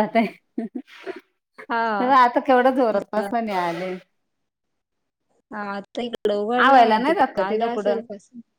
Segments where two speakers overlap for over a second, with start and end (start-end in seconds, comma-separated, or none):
6.7-8.0